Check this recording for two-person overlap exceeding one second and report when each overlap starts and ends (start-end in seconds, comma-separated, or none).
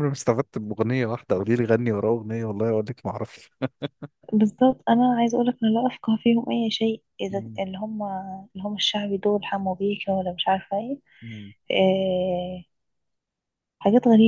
none